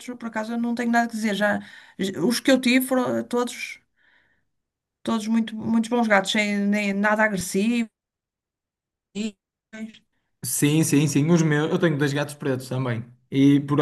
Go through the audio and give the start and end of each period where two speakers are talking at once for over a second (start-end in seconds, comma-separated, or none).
none